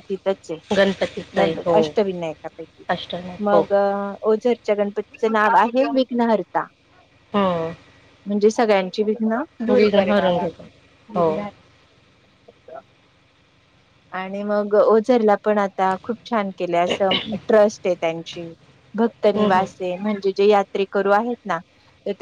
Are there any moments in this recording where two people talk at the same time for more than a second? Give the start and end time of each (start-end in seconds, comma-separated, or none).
none